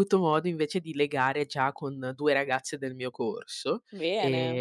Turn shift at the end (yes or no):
no